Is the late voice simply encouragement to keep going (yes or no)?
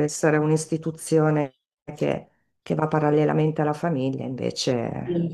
no